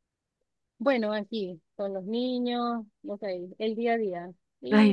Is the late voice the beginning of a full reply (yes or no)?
no